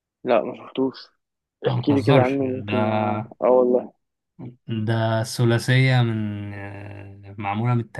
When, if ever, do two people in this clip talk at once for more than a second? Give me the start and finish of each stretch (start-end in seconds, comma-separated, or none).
1.7-3.3